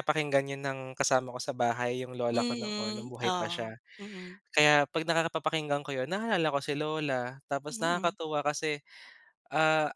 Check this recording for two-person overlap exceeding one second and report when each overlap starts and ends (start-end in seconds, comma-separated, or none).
2.3-3.7